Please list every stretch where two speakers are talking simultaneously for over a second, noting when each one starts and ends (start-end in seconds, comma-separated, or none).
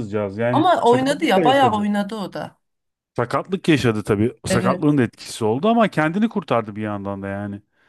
0.5-1.9